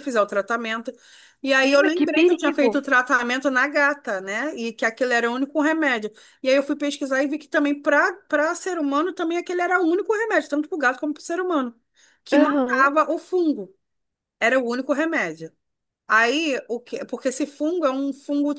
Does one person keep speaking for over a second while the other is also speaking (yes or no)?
yes